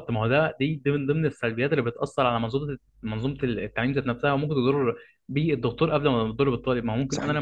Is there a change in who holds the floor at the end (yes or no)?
no